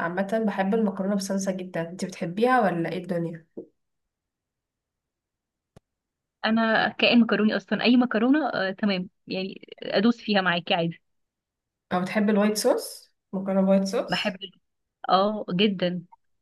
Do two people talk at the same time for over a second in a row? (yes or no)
no